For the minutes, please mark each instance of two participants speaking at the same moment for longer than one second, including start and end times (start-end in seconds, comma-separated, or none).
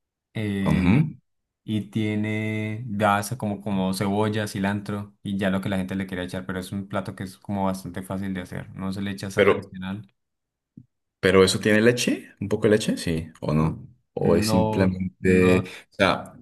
14.2-15.7